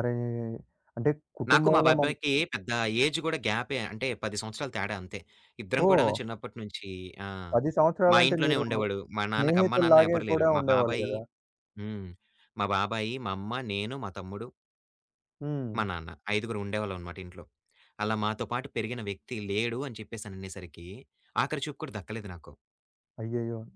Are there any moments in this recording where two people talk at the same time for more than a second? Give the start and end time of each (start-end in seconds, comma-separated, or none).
9.4-11.1